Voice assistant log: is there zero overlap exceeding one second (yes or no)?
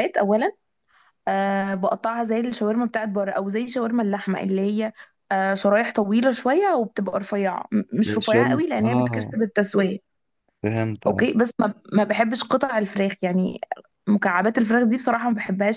no